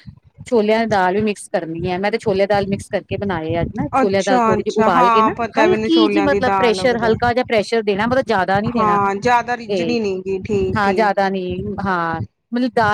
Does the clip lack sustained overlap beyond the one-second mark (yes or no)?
no